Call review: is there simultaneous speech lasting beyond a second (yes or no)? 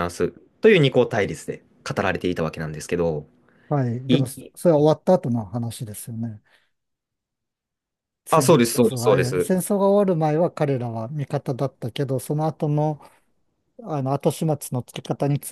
yes